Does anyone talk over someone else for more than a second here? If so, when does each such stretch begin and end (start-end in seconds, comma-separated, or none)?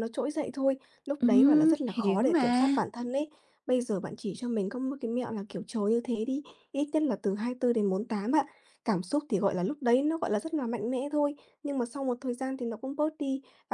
1.2-2.7